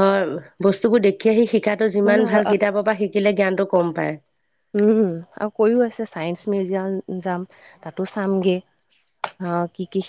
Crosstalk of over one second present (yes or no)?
no